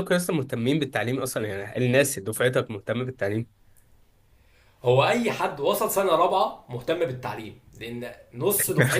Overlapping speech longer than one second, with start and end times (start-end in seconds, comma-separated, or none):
none